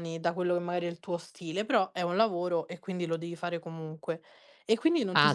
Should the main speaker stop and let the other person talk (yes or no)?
yes